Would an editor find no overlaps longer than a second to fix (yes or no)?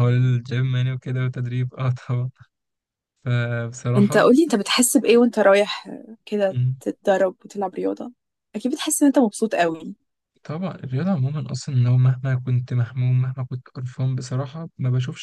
yes